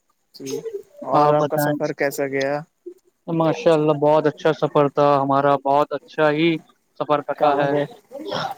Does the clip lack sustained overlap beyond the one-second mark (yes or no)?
yes